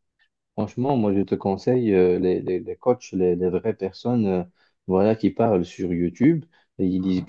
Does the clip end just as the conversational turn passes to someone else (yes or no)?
no